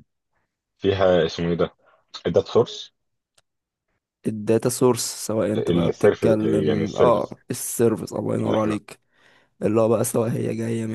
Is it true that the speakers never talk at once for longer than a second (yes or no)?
no